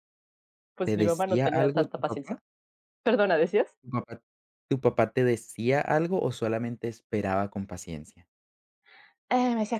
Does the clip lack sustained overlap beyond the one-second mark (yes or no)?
no